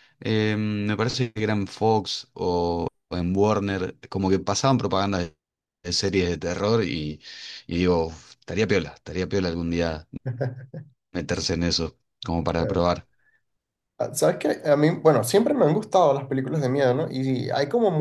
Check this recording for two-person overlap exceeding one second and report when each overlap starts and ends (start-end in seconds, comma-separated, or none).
none